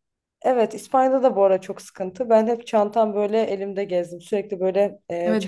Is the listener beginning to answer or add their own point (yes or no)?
yes